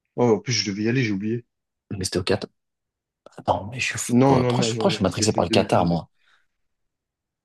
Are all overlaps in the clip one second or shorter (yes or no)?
no